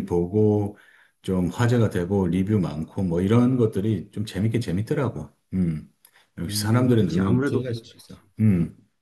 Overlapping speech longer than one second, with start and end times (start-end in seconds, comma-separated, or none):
6.5-8.2